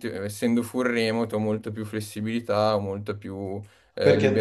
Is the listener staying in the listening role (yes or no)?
no